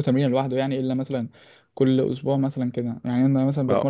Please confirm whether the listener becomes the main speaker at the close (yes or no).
no